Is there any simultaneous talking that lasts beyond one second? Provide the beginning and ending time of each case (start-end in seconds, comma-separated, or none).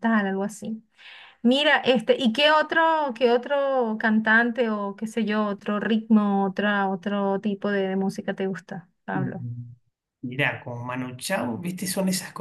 none